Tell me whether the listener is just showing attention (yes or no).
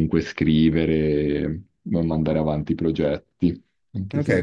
no